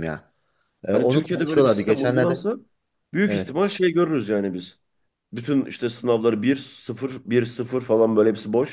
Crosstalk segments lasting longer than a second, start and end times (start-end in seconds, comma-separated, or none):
0.9-2.4